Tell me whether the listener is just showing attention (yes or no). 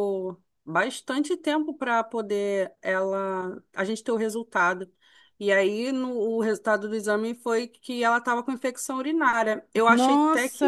no